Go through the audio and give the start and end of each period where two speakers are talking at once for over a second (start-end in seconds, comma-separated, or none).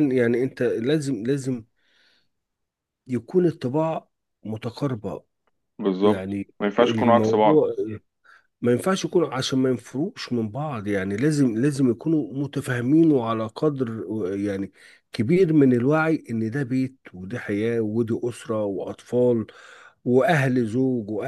6.0-7.6